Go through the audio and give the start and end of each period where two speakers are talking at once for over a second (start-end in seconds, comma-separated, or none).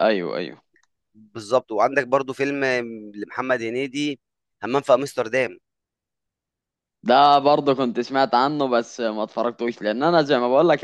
none